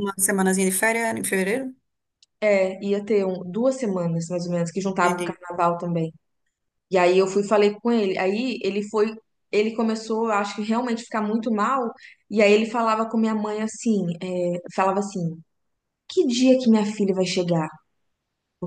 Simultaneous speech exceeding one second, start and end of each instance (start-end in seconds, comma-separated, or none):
none